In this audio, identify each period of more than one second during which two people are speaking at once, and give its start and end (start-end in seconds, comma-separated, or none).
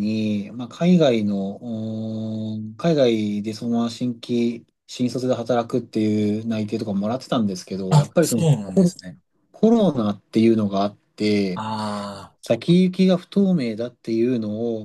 none